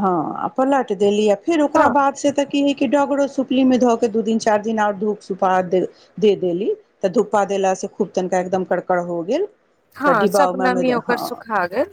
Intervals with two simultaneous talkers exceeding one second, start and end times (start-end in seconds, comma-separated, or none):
10.1-11.4